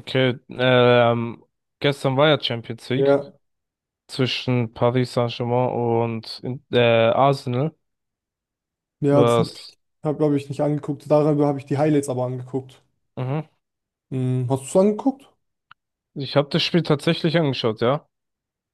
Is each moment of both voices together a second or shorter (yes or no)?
yes